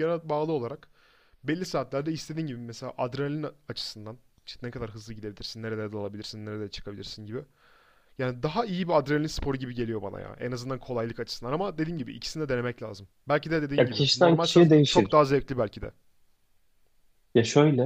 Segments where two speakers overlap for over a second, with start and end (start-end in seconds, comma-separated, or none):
13.8-15.2